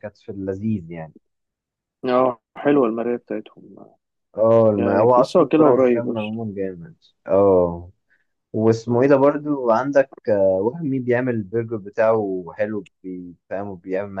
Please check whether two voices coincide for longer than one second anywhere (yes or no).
yes